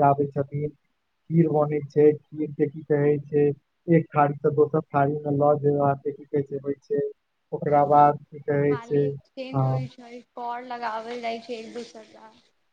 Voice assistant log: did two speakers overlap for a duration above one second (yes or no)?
yes